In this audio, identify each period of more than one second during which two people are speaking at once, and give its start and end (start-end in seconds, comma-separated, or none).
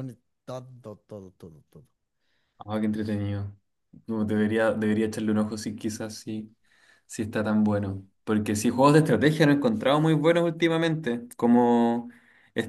none